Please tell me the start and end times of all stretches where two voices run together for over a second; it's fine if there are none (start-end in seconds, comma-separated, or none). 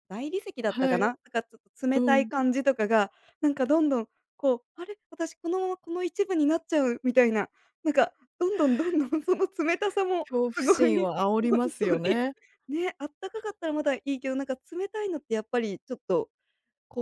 10.3-12.2